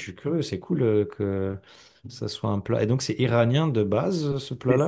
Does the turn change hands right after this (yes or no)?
yes